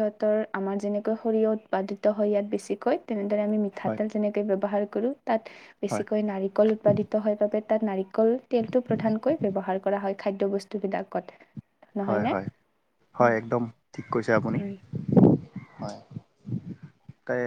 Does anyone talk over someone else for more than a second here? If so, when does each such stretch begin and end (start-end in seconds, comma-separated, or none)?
none